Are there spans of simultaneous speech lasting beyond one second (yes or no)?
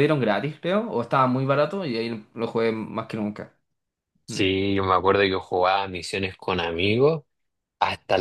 no